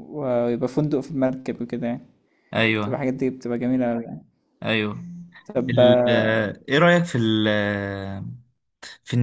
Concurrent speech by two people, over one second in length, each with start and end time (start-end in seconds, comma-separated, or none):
none